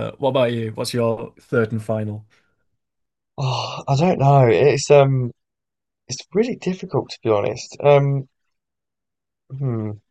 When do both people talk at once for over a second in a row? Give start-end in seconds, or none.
none